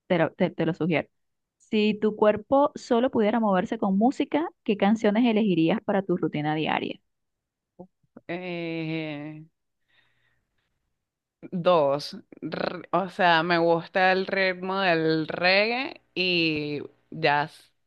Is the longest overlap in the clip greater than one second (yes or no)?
no